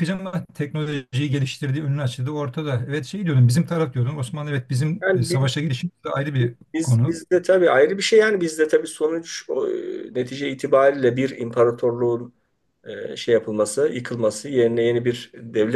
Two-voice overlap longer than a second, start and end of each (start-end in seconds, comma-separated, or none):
none